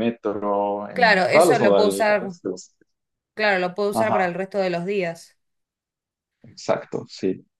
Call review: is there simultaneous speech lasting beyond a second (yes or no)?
yes